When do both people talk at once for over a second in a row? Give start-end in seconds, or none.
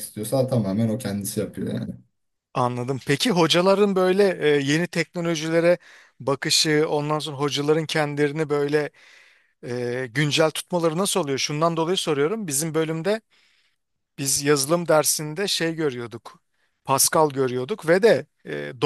none